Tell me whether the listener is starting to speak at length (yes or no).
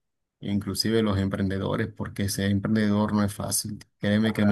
no